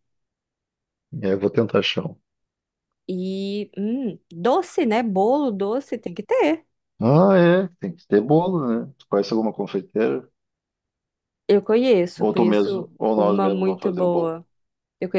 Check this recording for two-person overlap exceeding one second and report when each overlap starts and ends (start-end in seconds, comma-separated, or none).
12.2-14.3